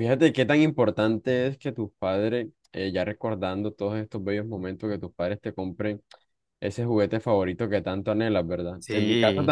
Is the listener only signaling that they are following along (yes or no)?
yes